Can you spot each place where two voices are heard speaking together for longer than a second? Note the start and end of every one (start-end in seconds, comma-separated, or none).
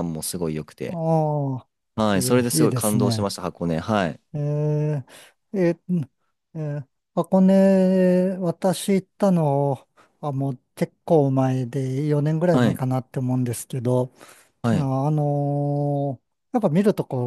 2.1-3.3